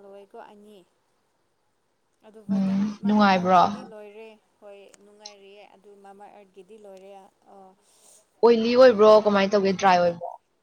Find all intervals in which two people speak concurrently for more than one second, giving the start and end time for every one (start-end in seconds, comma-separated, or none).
2.5-3.9